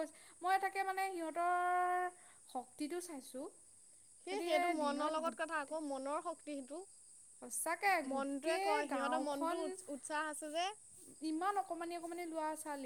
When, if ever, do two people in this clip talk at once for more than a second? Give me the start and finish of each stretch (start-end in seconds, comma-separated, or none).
8.1-9.6